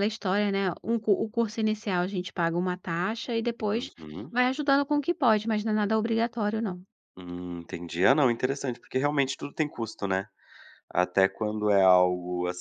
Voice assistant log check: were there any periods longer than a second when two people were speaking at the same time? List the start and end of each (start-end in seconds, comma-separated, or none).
none